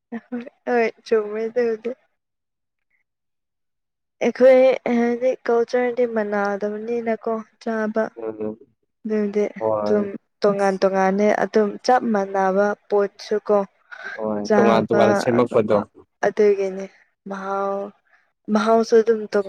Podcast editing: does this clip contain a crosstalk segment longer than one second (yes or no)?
no